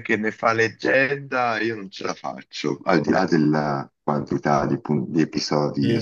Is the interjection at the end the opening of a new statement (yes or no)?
yes